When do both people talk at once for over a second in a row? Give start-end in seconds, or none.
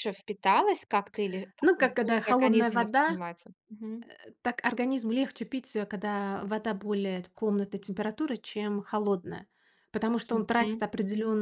1.6-3.2